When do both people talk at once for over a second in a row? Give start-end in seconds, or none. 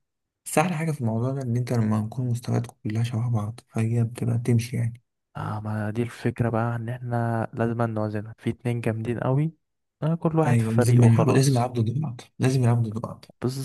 10.4-11.7